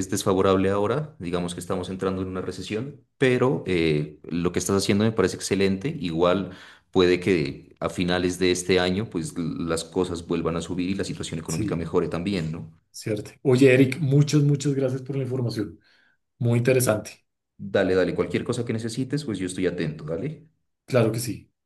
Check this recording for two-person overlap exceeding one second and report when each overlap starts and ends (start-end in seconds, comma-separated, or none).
none